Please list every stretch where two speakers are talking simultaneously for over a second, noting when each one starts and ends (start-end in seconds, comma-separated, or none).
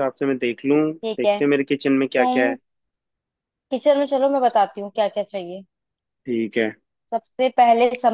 none